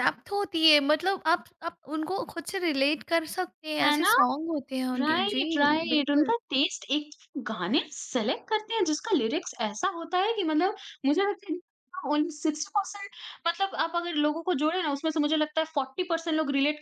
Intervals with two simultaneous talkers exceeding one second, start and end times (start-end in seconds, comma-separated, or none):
5.0-6.3